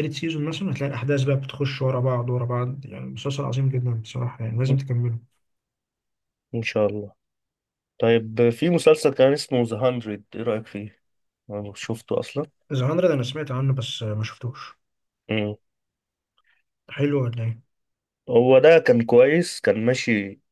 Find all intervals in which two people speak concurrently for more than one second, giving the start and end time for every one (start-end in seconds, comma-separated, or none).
none